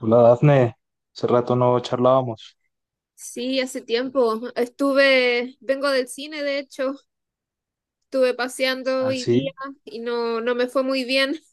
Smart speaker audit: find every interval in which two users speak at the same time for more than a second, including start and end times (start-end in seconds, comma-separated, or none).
none